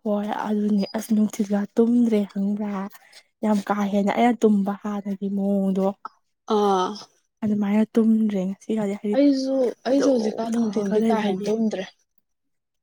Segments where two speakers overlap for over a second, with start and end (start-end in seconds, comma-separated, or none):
9.9-11.5